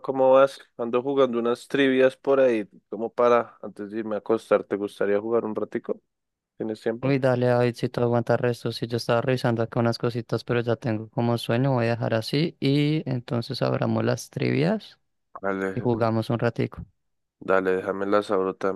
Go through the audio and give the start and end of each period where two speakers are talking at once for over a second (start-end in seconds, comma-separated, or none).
none